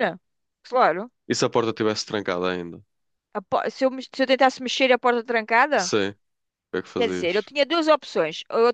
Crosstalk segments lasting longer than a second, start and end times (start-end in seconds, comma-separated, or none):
none